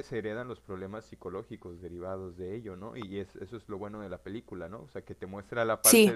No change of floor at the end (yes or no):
yes